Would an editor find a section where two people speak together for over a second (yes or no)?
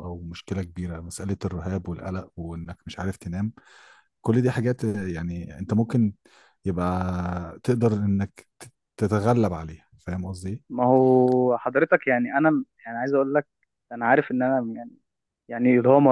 no